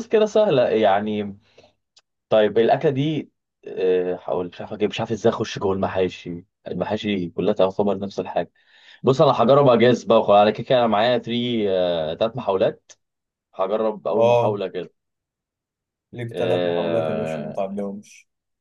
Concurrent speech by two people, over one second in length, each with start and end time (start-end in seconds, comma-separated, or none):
16.3-17.6